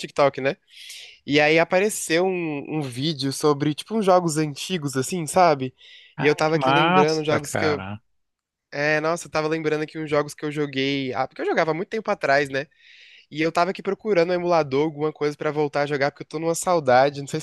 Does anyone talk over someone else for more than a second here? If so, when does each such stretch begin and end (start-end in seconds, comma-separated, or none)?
6.2-7.8